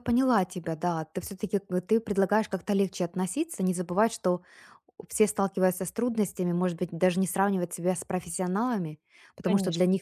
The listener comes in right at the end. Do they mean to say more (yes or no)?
no